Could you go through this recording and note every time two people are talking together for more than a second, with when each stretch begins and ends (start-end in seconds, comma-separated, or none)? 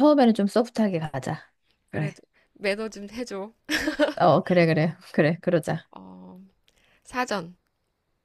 none